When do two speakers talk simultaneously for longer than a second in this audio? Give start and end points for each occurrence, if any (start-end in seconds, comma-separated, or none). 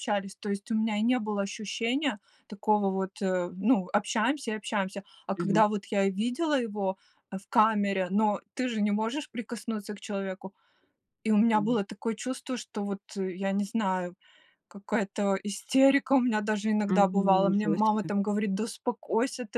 16.9-18.1